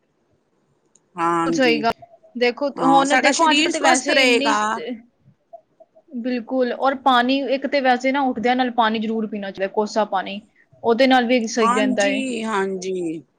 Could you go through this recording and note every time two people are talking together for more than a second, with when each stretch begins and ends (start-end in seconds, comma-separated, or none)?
2.8-4.5